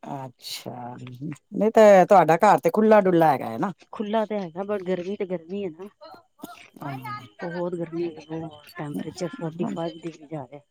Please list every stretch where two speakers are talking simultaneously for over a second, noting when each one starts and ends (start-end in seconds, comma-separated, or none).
none